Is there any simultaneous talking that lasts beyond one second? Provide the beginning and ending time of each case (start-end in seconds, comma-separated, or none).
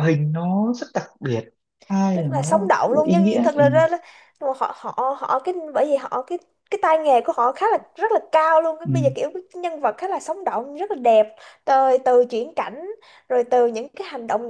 2.1-3.6